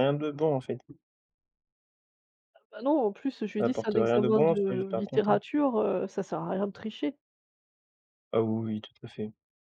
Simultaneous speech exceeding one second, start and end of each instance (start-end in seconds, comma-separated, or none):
3.6-5.4